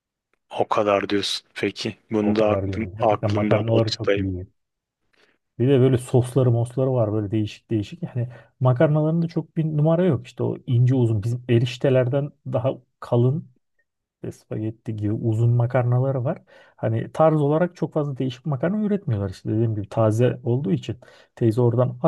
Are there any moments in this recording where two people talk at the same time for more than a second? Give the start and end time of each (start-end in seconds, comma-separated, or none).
2.2-4.3